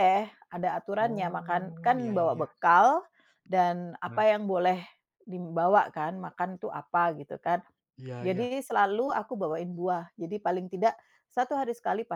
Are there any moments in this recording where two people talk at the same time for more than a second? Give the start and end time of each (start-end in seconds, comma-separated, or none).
1.0-2.5